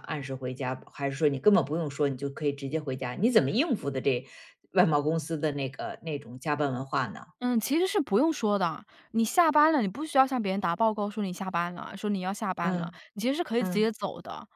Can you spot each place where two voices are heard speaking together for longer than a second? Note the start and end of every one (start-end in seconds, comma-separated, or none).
none